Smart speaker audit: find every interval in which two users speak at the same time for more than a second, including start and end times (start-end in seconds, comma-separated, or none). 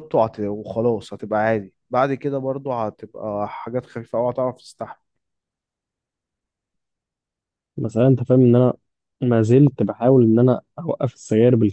none